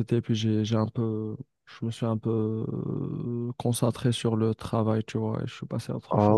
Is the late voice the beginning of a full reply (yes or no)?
yes